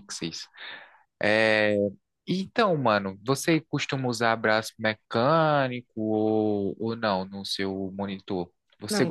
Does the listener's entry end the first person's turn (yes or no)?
yes